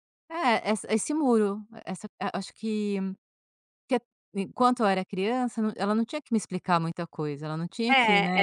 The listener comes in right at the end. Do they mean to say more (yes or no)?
yes